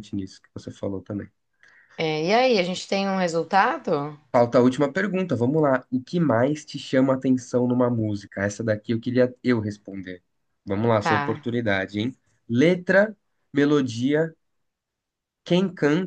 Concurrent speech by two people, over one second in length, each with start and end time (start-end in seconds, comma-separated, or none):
none